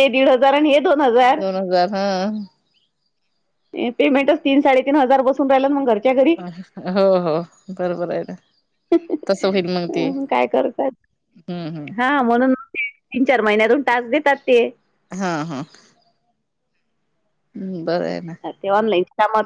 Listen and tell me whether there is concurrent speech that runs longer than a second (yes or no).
no